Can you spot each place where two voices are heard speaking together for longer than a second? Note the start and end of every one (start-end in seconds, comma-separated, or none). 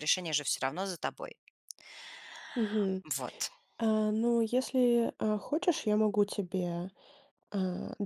none